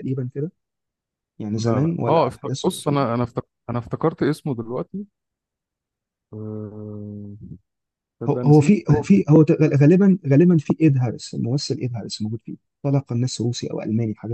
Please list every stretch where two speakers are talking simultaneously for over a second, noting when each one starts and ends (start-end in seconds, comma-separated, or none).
1.6-3.0